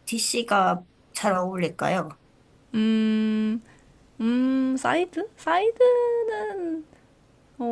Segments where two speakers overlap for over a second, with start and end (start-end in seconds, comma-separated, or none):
none